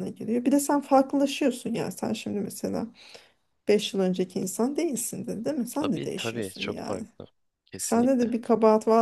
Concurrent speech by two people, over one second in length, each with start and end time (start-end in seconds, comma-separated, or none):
5.8-7.0